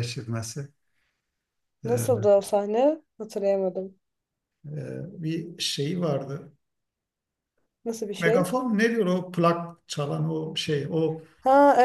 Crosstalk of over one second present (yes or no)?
no